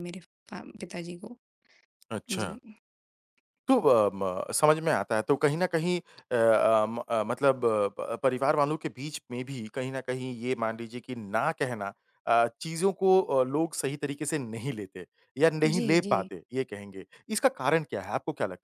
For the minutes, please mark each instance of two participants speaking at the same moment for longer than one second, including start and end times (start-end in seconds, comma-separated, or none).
none